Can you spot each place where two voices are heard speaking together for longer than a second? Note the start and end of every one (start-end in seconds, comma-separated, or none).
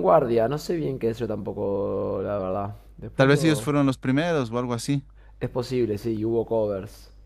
none